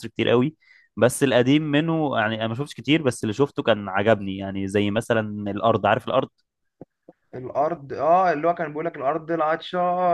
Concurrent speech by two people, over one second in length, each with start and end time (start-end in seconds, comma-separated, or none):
none